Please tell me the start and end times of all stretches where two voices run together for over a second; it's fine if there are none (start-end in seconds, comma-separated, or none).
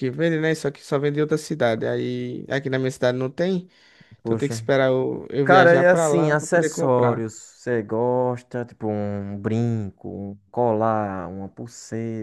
5.4-7.2